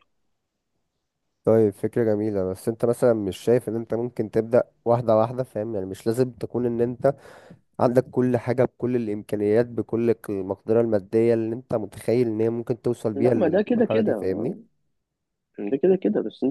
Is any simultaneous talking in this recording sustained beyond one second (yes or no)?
yes